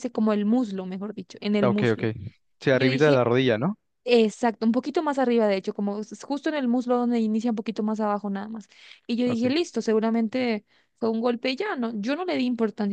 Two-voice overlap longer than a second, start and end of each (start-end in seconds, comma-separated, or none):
none